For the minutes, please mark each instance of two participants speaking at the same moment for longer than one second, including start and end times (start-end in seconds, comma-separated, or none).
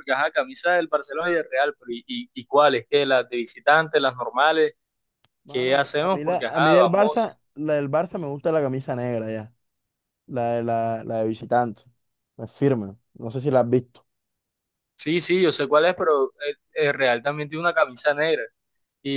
5.5-7.2